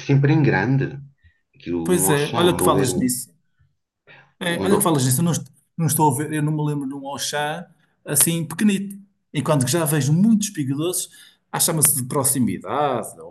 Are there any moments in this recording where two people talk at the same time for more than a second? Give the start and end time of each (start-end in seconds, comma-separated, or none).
1.8-3.1